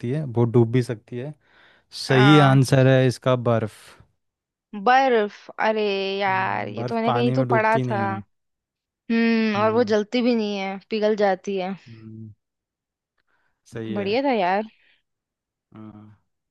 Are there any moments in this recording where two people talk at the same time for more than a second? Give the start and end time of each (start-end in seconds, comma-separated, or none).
6.3-8.0